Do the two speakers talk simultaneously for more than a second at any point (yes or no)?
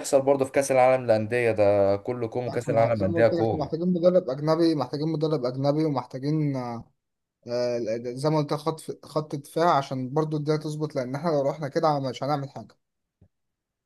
yes